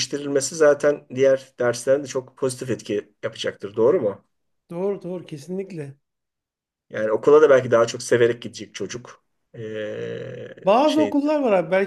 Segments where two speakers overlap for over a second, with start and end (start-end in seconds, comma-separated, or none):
none